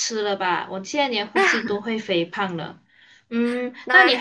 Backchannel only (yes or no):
yes